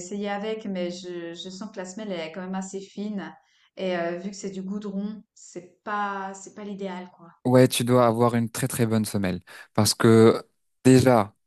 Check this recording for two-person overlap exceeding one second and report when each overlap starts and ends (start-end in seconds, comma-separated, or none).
none